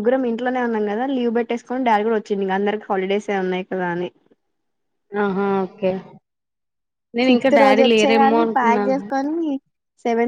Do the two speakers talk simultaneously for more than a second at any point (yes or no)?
yes